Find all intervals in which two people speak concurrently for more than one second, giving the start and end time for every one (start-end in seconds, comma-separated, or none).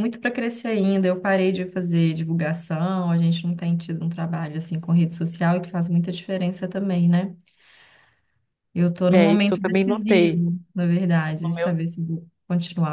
9.1-10.4